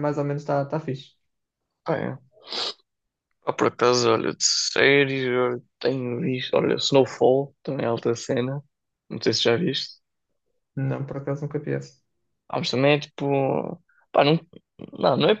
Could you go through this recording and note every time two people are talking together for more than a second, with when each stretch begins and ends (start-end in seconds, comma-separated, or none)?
none